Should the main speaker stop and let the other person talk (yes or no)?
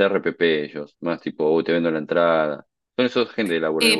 yes